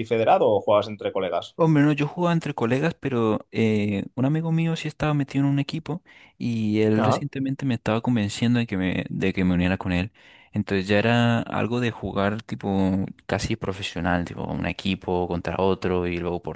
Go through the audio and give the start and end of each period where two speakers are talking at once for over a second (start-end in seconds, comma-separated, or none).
none